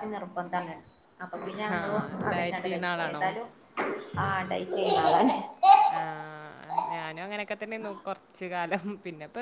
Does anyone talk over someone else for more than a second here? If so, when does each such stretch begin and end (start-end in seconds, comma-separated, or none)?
1.8-3.2